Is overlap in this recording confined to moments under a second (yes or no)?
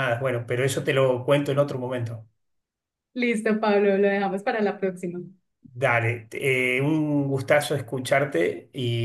yes